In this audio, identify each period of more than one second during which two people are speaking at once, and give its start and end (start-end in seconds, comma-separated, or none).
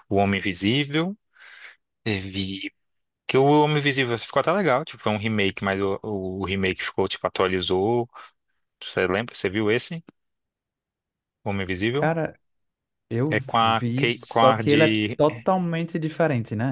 13.3-15.2